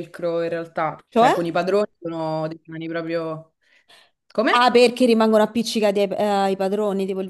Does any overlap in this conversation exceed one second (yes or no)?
no